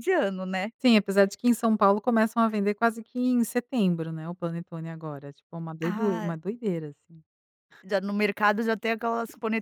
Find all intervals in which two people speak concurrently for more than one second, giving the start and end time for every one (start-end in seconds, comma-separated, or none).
none